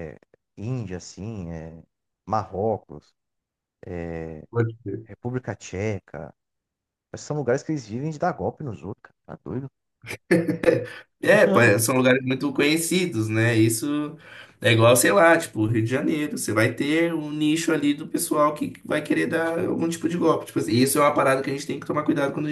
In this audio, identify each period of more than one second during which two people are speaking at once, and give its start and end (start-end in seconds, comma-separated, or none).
none